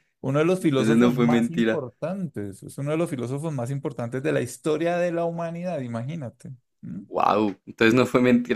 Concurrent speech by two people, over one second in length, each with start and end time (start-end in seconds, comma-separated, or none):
0.6-1.8